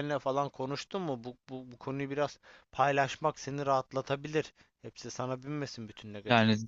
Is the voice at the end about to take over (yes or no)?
yes